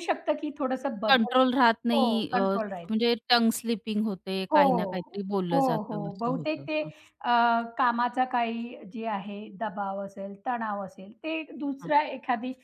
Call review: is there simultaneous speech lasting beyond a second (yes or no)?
yes